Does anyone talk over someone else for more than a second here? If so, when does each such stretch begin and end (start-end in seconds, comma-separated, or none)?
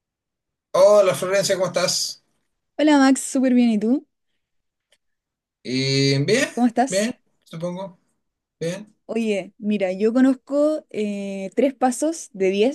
none